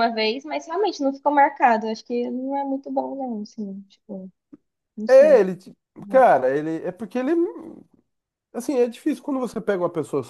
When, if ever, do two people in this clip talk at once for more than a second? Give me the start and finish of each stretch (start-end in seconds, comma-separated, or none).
none